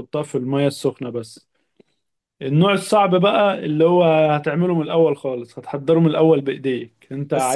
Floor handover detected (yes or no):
yes